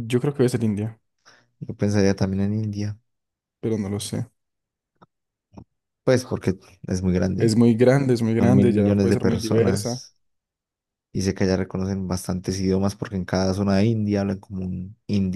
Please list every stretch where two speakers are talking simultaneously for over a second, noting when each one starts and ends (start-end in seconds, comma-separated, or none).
8.4-10.0